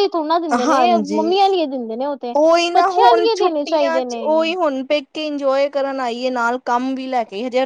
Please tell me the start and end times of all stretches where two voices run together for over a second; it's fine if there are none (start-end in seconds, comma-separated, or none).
2.7-4.2